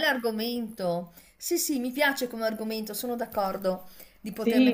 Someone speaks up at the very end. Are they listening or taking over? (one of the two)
listening